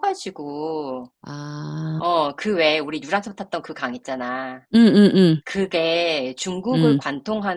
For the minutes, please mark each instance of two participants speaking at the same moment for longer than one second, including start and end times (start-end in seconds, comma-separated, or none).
none